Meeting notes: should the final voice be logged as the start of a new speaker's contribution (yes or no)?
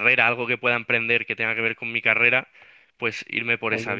yes